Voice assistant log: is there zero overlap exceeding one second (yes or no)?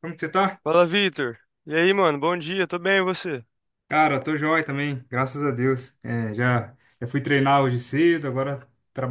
yes